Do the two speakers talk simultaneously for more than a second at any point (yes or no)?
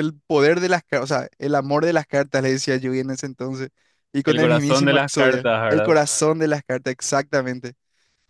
yes